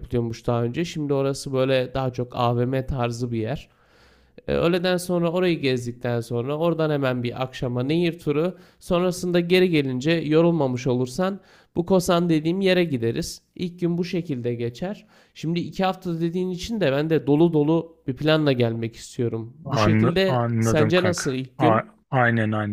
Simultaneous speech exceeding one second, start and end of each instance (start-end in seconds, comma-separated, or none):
19.6-22.0